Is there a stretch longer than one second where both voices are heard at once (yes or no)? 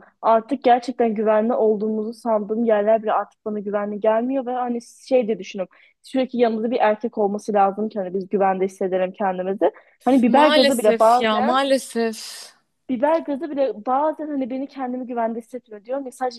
yes